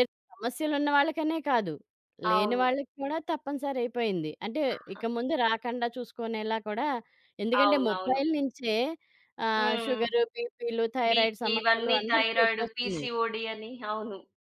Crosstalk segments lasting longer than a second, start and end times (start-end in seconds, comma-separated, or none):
11.1-13.1